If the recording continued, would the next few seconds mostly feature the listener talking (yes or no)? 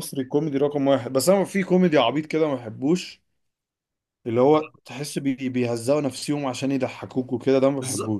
yes